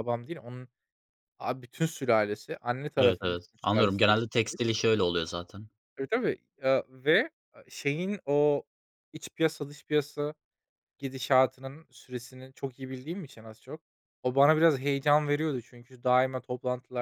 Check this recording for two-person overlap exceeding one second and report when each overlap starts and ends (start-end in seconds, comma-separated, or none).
3.0-4.6